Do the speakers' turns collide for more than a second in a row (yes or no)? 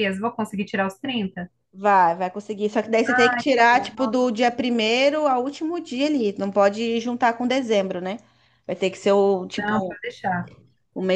yes